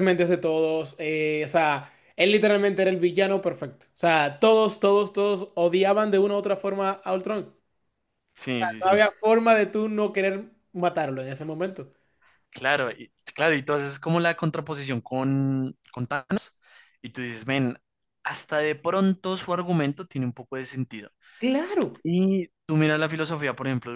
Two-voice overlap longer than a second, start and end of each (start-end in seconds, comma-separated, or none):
none